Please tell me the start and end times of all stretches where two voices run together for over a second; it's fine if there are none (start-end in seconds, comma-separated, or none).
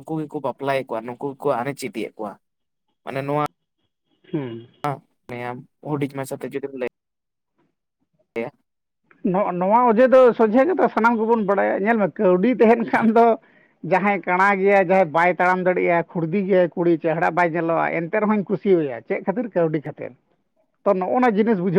none